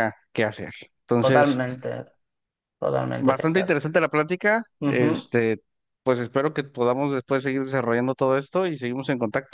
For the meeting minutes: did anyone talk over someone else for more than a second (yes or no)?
no